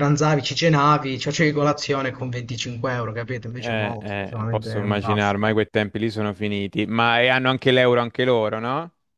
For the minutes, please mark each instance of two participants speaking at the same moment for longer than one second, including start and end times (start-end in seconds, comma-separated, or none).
3.6-5.3